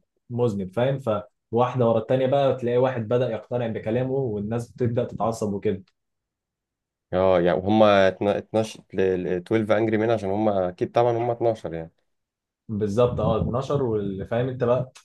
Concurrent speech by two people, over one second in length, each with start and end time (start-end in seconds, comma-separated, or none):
none